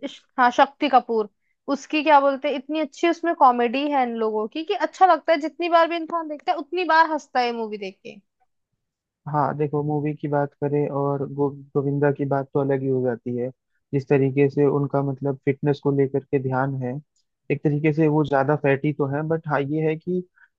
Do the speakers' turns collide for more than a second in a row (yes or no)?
no